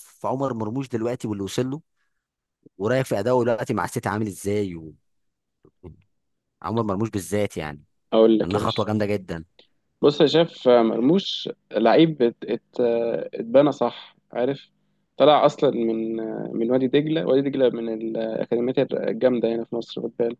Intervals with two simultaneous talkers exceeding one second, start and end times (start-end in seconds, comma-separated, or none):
none